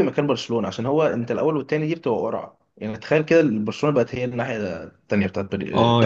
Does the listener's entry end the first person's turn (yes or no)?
yes